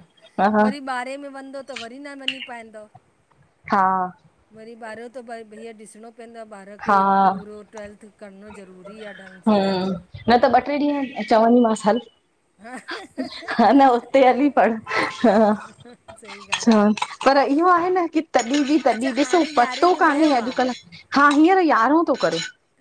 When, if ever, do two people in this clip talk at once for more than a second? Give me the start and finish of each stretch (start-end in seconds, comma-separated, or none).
18.9-20.7